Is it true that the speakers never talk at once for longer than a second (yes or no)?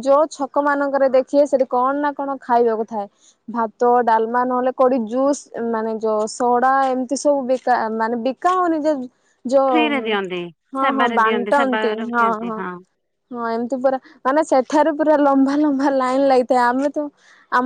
no